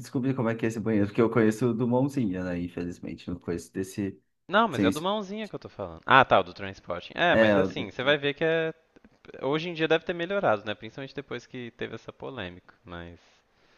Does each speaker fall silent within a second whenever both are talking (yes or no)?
yes